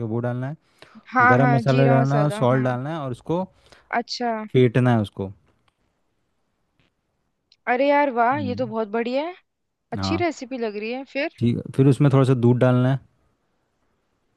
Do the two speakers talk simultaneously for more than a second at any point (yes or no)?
yes